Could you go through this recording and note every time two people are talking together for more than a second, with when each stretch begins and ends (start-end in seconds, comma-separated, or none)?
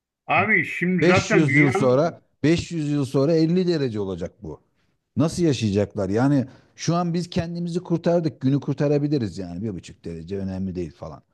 1.0-2.2